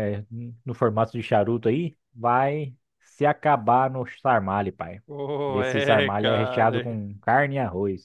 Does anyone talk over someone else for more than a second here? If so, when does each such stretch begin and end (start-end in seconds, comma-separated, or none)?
5.5-7.0